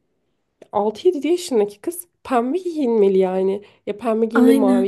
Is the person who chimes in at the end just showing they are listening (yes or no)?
yes